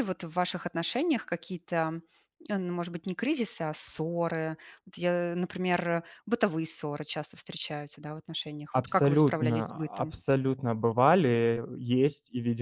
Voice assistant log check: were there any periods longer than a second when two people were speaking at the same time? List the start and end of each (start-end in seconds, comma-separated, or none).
8.7-10.1